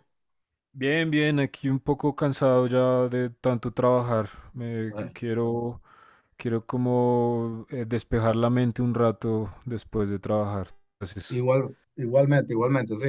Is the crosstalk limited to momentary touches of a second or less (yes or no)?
yes